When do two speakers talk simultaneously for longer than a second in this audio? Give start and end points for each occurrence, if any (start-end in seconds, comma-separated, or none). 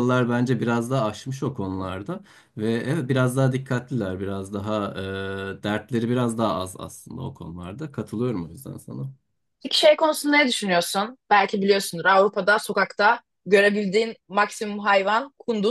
none